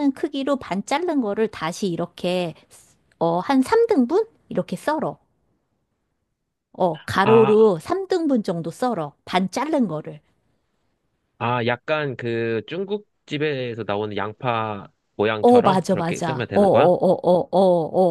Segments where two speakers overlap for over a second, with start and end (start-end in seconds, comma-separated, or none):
15.4-16.9